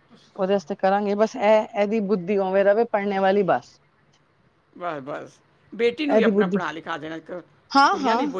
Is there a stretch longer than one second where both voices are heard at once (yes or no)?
no